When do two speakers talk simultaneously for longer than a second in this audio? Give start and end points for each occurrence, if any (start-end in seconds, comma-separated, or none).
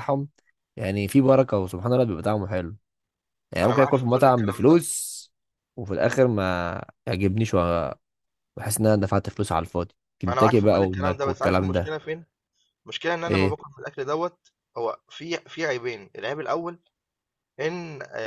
3.6-4.8, 10.3-12.0